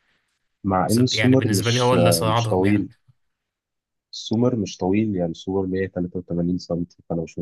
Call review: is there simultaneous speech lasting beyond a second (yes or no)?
yes